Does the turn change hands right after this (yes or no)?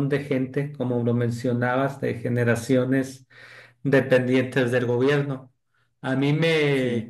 no